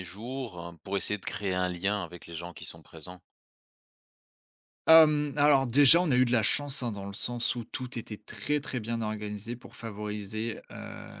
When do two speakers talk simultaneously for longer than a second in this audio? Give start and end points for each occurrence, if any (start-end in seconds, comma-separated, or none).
none